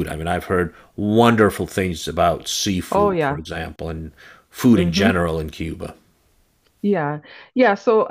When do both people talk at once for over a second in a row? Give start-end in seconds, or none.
none